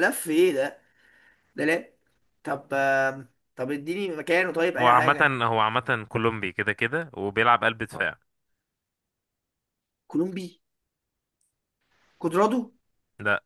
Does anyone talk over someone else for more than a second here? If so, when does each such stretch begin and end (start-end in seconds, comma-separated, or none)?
none